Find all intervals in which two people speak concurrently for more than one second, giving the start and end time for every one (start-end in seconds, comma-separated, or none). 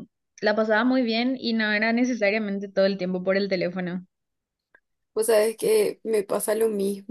none